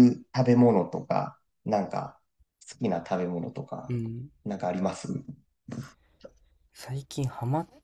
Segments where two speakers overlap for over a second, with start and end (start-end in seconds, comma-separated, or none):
none